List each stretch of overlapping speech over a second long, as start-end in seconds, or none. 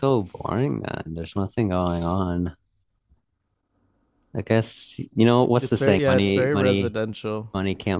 5.6-7.0